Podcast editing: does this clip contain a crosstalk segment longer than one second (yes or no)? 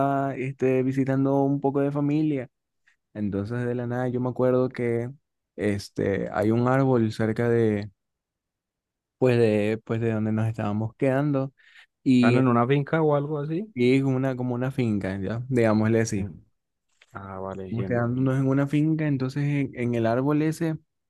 no